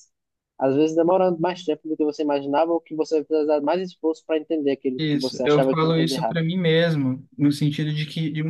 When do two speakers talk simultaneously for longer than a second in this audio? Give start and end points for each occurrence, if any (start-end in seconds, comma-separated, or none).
5.0-6.4